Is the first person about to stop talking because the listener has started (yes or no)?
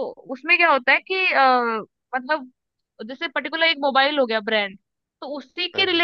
no